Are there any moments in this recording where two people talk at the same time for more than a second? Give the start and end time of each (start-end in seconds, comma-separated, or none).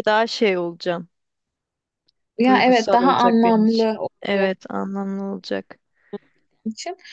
2.5-4.5